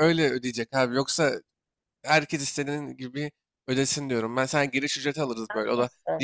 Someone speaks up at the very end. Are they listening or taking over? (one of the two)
listening